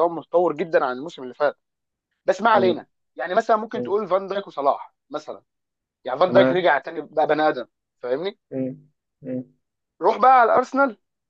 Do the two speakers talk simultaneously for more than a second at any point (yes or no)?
no